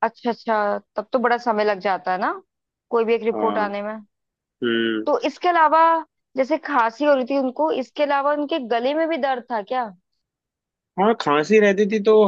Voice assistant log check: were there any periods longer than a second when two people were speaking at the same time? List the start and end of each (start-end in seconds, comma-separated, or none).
none